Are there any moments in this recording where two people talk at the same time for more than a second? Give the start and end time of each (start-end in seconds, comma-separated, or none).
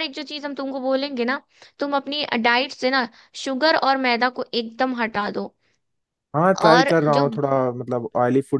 none